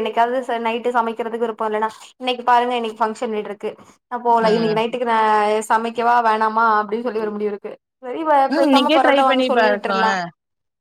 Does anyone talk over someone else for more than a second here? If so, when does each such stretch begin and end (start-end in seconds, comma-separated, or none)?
8.5-10.1